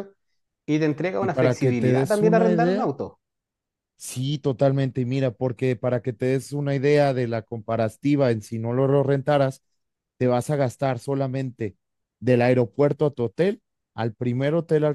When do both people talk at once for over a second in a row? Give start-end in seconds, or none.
1.2-2.9